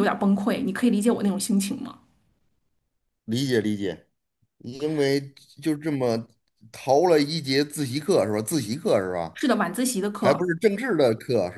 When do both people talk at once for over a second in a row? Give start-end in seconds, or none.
none